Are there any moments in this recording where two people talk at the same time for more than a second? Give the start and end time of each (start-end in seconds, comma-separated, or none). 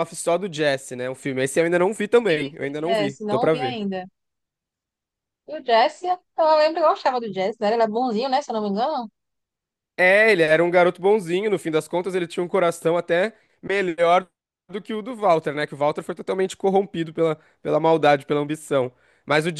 2.3-3.8